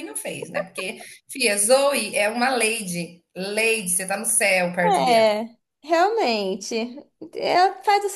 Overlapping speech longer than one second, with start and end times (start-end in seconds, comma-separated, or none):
none